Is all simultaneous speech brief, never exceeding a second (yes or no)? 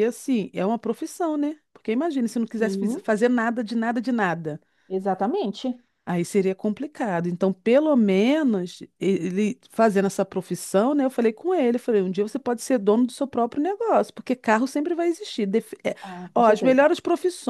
yes